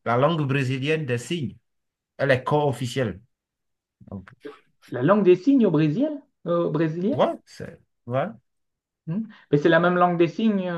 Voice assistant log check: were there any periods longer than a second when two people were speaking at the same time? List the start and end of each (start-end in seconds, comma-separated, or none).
none